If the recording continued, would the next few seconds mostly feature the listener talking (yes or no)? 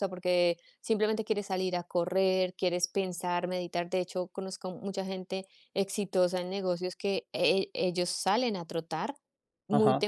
no